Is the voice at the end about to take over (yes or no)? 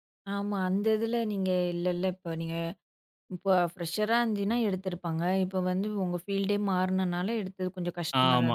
yes